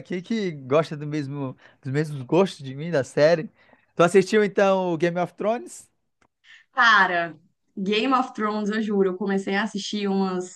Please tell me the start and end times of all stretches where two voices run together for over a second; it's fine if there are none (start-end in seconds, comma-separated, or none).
none